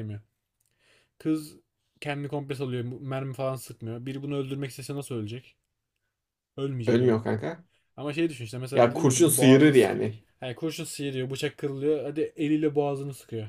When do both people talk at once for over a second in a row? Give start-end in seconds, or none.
8.7-10.1